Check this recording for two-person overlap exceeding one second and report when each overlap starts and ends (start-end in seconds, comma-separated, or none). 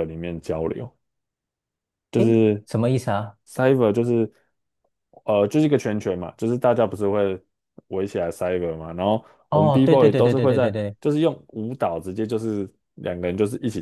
9.5-11.0